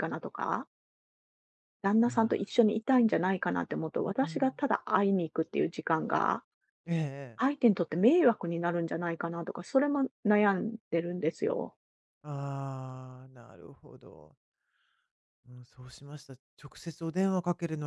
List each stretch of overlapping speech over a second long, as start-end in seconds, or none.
none